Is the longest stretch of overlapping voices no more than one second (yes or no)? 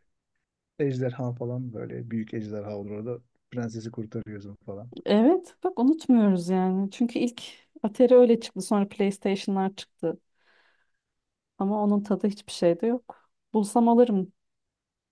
yes